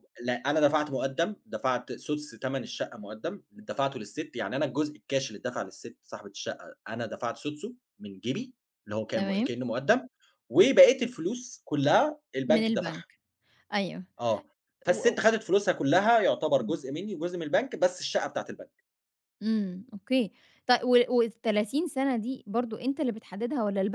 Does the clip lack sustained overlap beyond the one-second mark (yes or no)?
yes